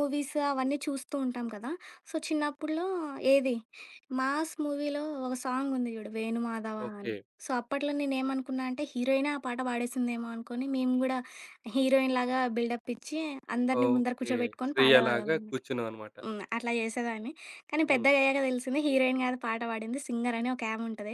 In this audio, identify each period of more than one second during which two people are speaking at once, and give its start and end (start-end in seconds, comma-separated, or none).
13.8-15.6